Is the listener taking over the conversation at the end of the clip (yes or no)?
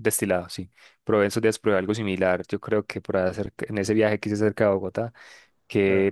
no